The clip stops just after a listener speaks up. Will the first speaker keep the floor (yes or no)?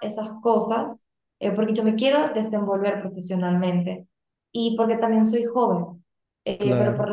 yes